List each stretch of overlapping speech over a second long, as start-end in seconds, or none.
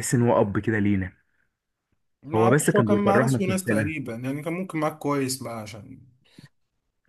2.3-4.0